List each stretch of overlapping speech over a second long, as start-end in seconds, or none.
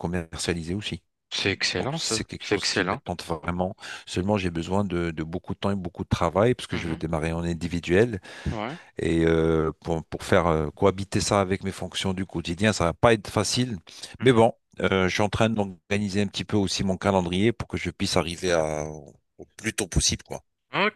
1.8-3.0